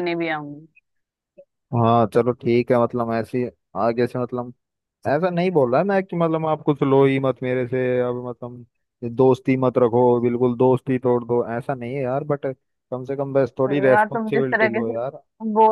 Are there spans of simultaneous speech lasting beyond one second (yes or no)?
yes